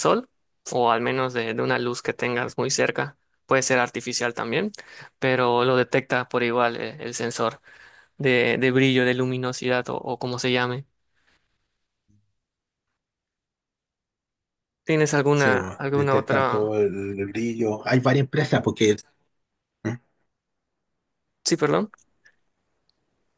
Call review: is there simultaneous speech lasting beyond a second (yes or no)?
yes